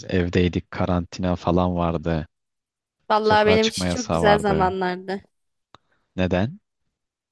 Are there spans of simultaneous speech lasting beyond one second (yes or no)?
yes